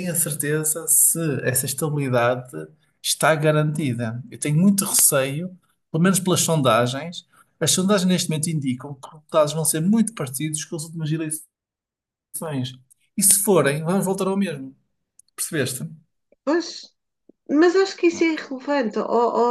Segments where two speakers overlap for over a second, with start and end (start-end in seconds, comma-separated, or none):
none